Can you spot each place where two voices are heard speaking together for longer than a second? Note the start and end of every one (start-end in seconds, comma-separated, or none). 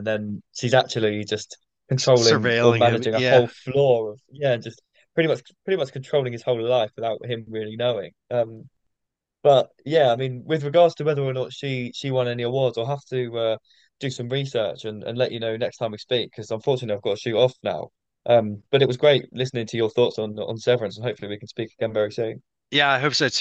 2.0-3.4